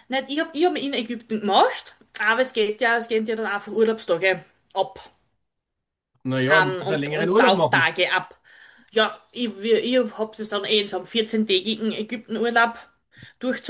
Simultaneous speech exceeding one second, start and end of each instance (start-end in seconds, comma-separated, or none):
6.5-7.9